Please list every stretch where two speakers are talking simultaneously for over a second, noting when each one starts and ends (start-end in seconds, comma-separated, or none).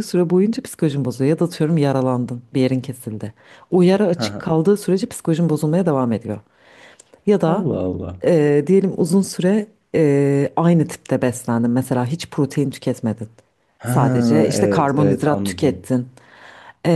13.8-15.8